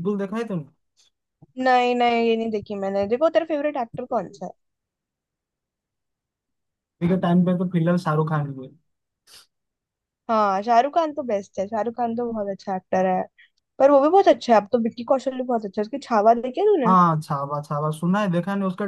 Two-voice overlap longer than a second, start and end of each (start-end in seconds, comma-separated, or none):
none